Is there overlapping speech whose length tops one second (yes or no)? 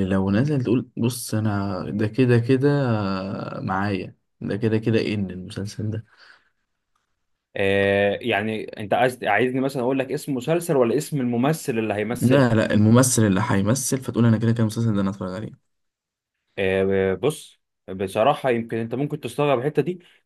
no